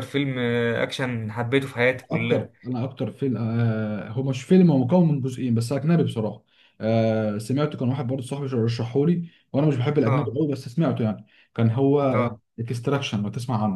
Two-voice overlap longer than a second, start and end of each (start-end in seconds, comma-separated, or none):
none